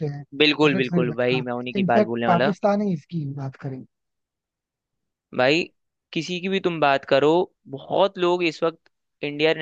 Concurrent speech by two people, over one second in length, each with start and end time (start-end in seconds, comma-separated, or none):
0.6-2.5